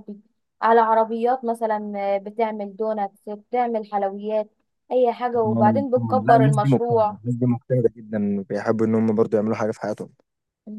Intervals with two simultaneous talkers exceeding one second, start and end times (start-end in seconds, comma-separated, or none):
5.4-7.2